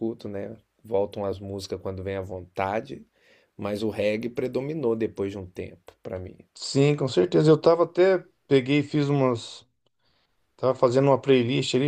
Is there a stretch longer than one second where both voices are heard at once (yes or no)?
no